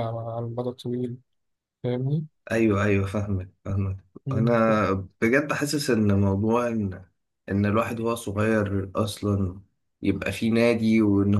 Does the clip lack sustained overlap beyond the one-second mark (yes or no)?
yes